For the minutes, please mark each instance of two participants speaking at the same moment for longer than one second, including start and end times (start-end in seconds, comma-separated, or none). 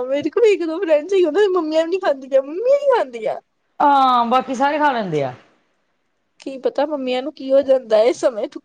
none